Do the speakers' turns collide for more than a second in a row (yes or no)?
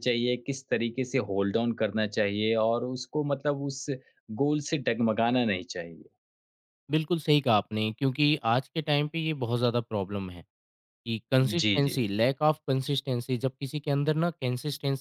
no